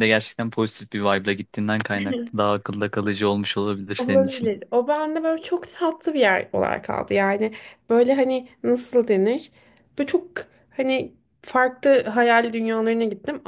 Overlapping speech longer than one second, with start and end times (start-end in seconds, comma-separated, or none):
none